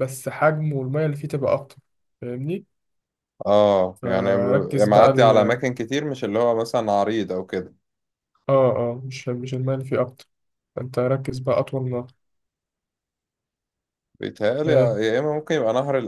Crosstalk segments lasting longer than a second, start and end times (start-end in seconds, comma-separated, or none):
4.0-5.3